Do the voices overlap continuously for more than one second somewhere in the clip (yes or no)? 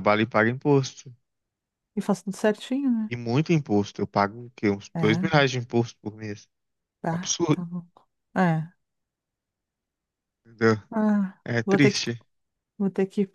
no